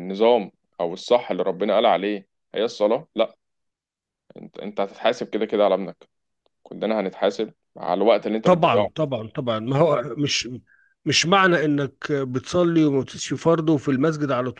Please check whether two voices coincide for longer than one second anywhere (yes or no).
no